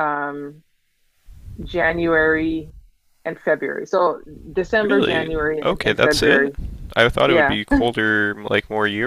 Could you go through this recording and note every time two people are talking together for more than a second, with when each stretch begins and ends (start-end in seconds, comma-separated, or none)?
4.9-6.5